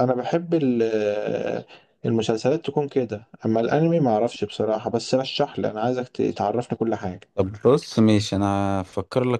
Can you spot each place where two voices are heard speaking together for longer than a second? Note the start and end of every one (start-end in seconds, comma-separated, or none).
none